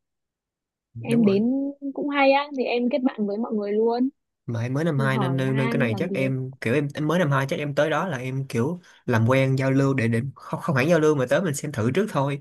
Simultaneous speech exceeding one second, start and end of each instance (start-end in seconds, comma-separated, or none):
5.1-6.3